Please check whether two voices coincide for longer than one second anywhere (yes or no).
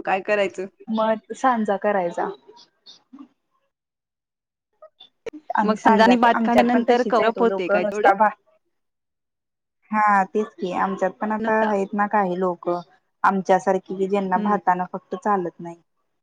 yes